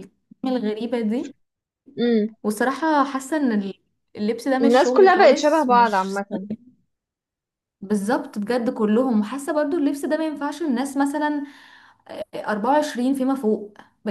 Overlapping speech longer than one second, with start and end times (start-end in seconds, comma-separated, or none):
4.6-6.2